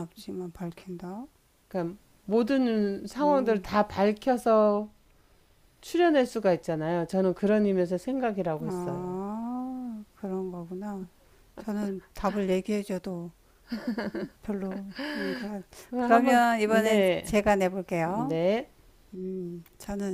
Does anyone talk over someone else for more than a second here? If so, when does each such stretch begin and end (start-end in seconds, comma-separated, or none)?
15.9-17.4